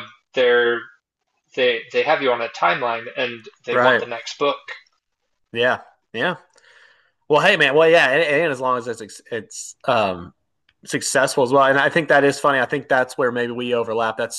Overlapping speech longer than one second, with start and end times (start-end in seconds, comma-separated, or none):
none